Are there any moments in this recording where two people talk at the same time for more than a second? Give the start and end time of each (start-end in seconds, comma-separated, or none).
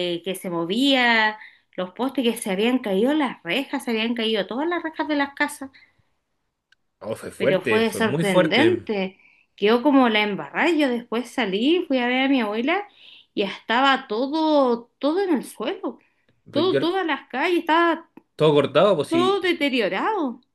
7.4-8.8